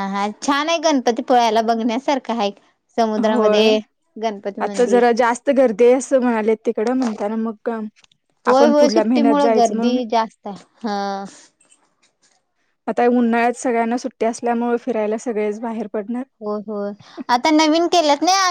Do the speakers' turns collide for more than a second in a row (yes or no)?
yes